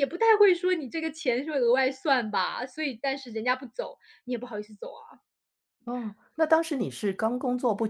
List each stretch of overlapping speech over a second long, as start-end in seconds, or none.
none